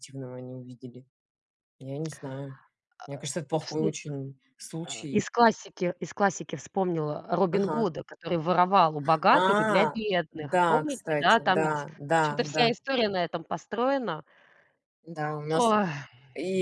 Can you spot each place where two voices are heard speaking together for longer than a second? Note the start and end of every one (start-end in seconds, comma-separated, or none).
10.3-12.7